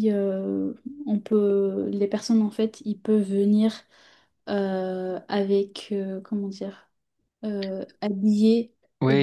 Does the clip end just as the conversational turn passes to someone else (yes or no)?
yes